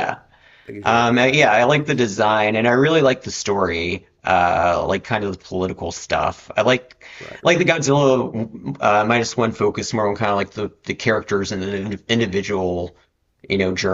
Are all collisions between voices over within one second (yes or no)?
no